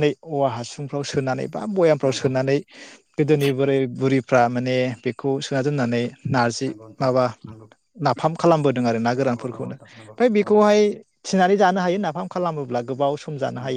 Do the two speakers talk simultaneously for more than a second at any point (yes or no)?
yes